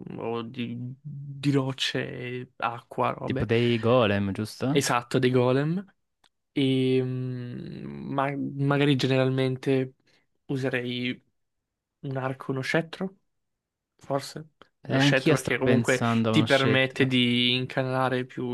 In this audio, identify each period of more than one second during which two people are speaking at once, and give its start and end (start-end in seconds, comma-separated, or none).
14.9-17.1